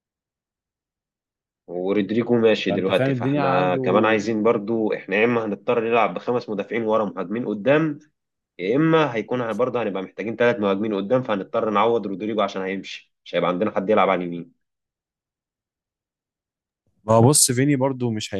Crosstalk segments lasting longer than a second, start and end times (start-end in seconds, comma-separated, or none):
2.7-3.9